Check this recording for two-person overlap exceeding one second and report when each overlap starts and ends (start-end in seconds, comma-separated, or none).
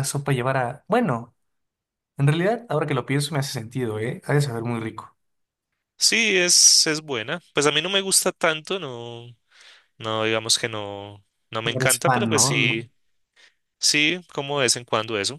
11.6-12.8